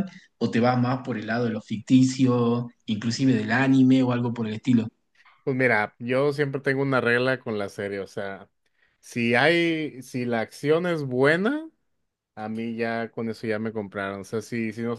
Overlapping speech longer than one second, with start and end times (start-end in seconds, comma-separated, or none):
none